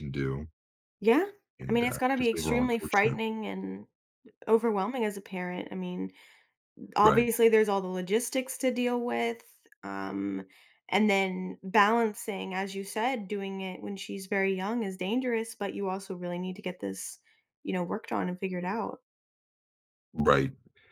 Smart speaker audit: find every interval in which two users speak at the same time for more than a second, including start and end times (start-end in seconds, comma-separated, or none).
1.7-3.2